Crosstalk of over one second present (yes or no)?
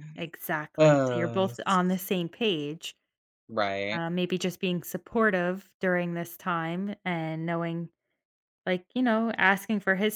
yes